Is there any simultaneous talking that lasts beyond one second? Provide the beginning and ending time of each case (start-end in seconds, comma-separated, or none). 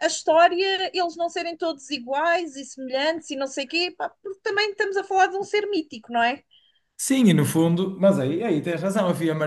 none